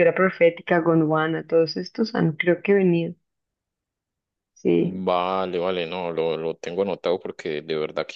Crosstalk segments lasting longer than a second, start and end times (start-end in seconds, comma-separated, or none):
none